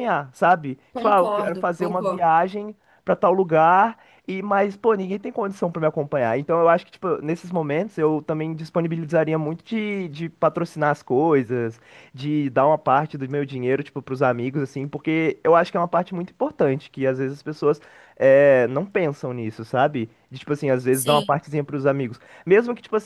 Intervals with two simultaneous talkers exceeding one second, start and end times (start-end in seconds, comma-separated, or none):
0.9-2.3